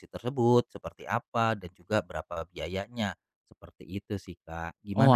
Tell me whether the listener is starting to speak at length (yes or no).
yes